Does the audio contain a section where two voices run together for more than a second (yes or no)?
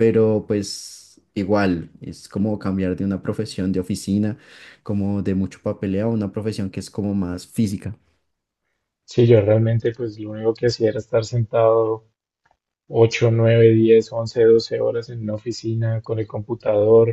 no